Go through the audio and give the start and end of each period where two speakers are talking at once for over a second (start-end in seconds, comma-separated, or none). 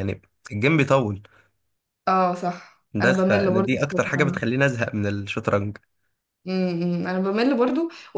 2.9-4.4